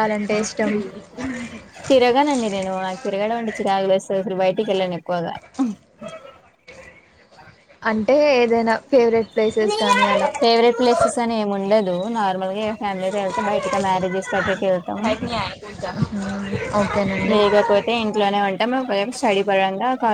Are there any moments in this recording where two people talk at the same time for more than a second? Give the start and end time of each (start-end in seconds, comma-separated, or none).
none